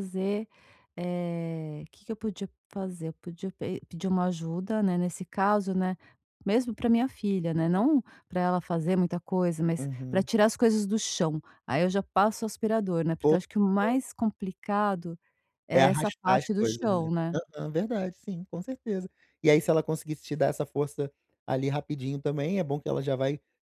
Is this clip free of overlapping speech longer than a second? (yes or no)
no